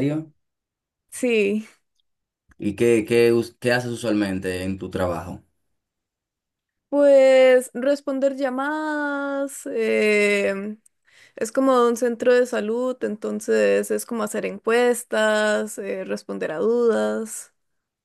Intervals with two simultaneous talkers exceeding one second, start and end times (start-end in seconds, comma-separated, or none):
none